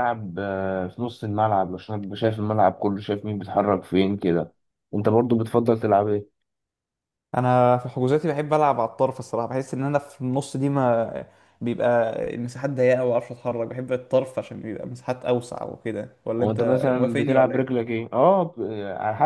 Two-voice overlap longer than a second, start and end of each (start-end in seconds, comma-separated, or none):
16.4-17.8